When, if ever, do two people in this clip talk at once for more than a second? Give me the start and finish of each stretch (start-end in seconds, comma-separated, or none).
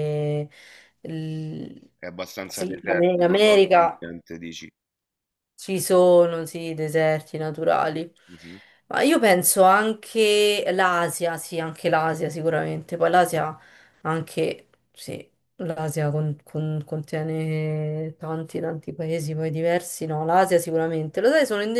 2.5-4.0